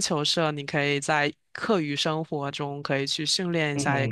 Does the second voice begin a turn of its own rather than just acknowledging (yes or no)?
no